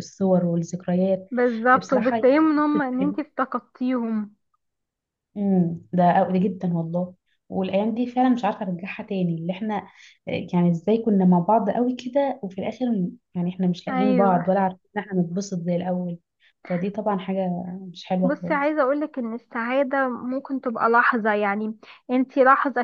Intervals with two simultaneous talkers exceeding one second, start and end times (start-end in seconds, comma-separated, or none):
1.8-3.2